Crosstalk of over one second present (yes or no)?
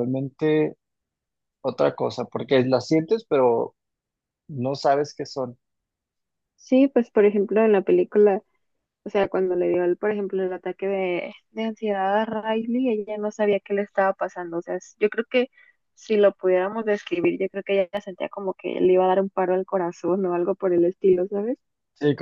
no